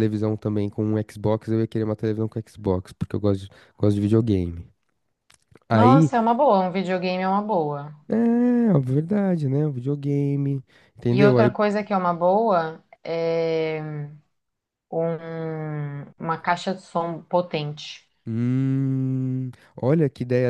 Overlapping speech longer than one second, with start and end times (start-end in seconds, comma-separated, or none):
none